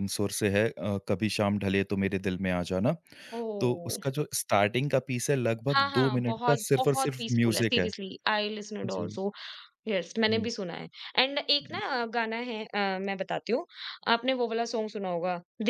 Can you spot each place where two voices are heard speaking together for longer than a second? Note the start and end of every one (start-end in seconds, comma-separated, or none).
5.7-7.9